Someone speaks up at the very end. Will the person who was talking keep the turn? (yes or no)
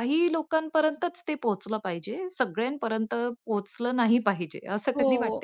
no